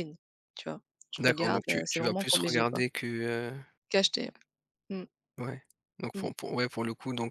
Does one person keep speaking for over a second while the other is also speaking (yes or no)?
yes